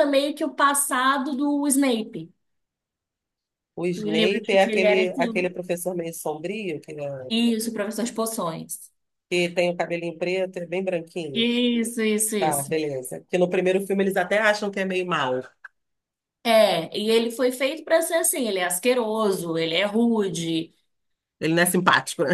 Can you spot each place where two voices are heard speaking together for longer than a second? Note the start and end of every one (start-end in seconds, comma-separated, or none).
4.0-5.2